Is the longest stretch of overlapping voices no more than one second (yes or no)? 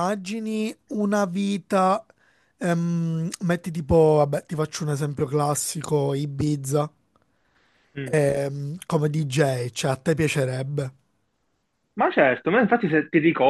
yes